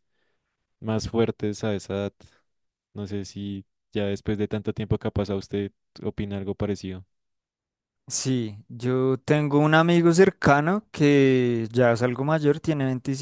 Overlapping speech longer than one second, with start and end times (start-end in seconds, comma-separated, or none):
none